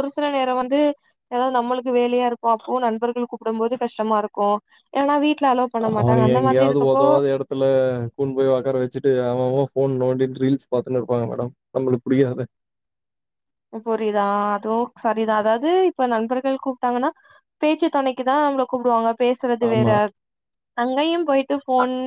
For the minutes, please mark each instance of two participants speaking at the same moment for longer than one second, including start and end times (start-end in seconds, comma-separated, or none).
none